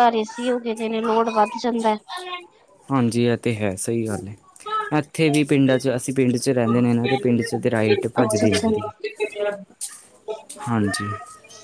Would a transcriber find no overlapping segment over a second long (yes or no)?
yes